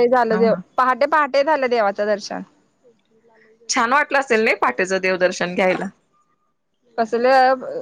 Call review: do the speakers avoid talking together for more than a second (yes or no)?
yes